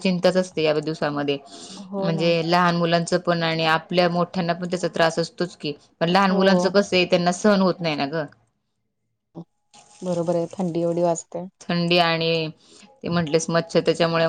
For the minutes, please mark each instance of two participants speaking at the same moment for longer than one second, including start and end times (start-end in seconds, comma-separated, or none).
none